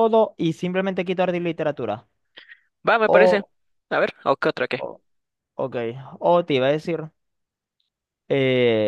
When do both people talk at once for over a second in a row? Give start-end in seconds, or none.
none